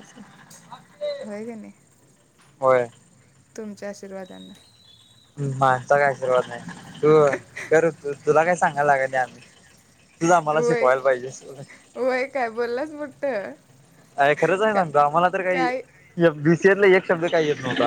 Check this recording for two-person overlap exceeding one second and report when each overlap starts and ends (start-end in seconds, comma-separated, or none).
none